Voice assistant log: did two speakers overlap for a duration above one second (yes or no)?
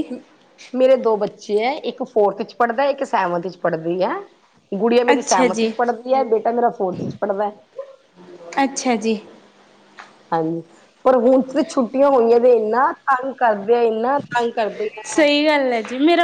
no